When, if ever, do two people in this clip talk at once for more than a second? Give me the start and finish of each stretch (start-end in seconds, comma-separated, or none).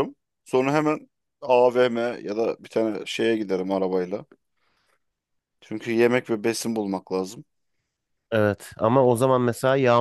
none